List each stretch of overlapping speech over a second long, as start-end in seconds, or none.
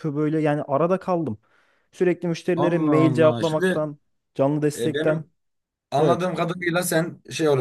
2.6-3.8